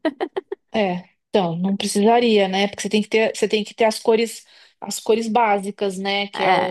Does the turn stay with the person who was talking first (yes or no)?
yes